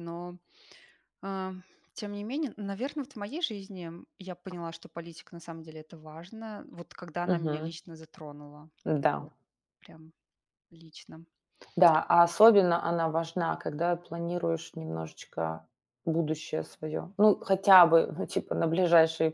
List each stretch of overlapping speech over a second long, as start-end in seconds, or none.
none